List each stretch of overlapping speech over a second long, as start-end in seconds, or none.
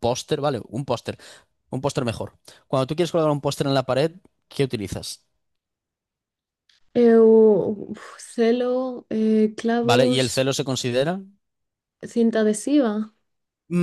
none